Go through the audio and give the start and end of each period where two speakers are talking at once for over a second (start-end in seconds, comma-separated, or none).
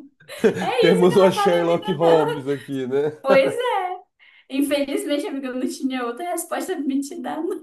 0.8-2.5